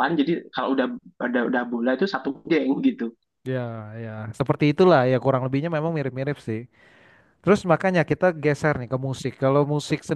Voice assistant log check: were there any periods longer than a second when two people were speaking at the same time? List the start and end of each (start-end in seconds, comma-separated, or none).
none